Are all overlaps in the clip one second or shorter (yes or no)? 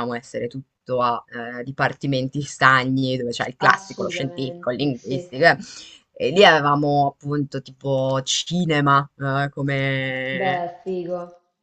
no